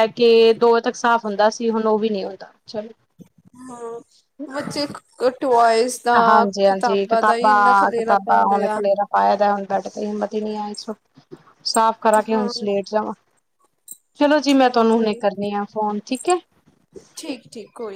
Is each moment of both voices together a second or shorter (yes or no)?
no